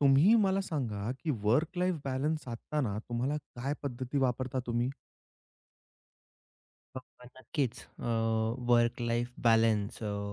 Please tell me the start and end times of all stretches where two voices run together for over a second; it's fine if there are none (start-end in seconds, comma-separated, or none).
none